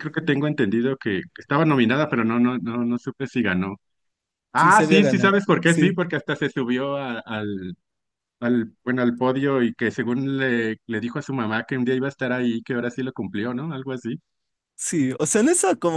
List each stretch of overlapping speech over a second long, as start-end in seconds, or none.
4.5-5.9